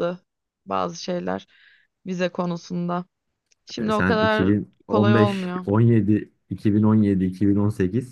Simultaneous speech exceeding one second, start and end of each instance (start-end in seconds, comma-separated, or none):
3.8-5.7